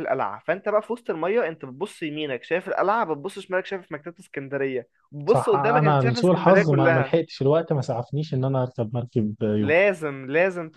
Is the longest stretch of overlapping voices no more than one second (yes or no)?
no